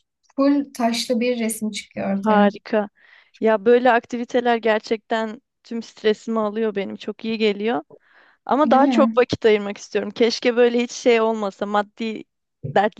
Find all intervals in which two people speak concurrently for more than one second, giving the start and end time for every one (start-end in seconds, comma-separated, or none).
none